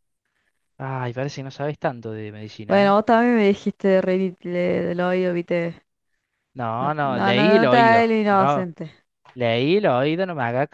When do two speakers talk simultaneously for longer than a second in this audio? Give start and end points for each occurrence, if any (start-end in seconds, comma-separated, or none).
6.8-8.7